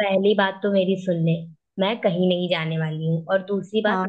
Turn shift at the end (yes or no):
no